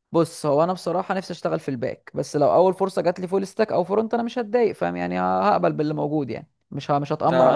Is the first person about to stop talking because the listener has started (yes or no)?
yes